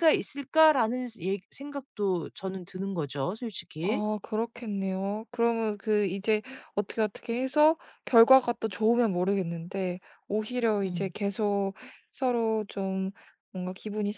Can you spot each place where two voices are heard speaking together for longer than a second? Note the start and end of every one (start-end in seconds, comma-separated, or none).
none